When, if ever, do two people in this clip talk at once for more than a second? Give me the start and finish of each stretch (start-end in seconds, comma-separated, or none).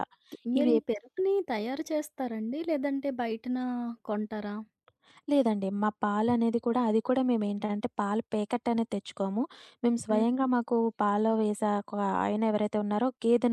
none